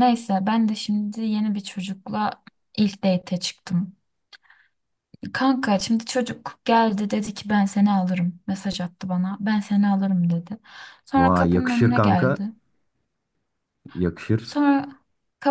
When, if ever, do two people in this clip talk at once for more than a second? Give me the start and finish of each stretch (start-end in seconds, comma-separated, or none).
11.2-12.4